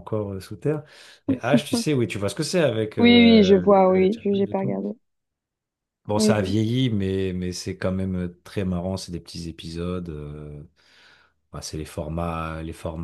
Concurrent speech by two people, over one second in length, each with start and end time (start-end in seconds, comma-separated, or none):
3.0-4.7